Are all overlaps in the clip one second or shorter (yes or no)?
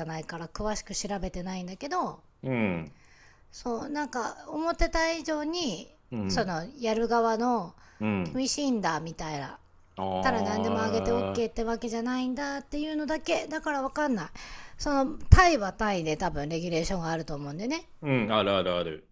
no